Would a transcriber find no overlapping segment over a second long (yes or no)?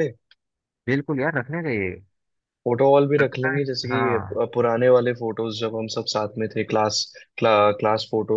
yes